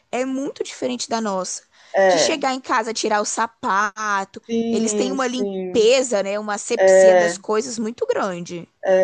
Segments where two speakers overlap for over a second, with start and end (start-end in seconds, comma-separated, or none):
4.5-5.9